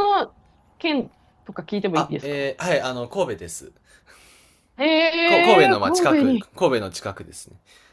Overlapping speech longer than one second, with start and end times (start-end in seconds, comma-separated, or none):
5.2-6.5